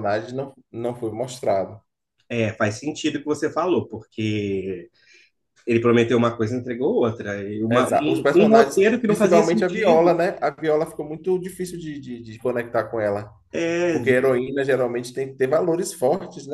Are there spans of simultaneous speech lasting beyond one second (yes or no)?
yes